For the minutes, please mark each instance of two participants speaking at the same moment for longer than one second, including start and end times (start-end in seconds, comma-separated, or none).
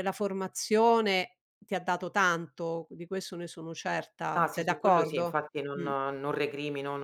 4.4-5.9